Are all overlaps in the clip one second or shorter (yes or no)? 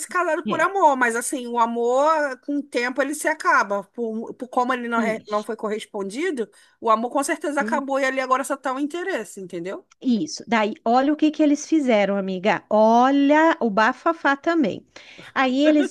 yes